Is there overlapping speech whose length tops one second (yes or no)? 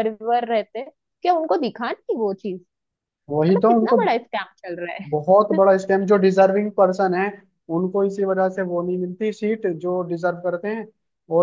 no